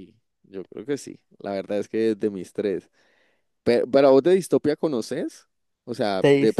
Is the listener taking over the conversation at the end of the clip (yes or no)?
no